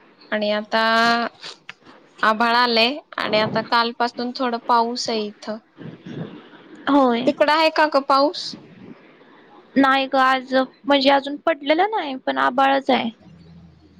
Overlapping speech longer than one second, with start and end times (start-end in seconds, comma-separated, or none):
none